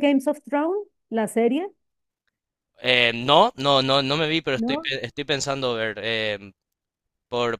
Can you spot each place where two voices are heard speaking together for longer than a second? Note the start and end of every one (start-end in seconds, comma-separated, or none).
none